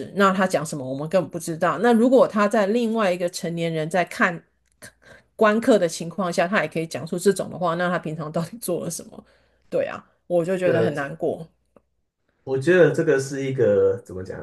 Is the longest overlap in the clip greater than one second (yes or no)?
no